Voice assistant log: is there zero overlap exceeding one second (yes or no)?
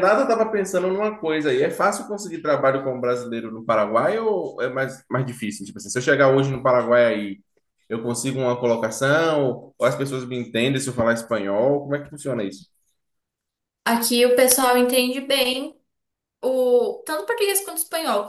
yes